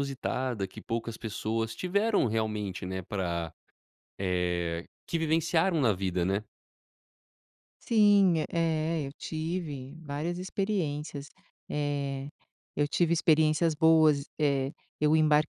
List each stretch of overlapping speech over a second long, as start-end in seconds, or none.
none